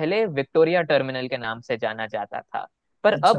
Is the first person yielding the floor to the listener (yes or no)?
no